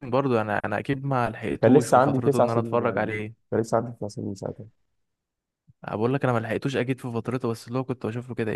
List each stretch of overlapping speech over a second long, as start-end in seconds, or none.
1.6-3.5